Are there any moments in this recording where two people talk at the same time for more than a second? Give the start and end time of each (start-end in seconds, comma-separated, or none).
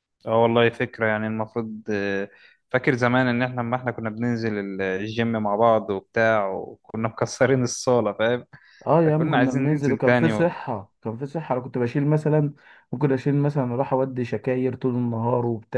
9.0-10.6